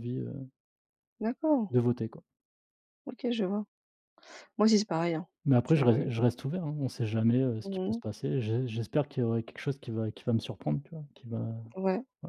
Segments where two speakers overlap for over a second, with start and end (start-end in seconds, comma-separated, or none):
none